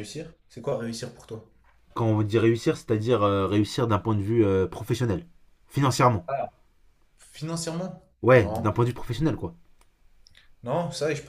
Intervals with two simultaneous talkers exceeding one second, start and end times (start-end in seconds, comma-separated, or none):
none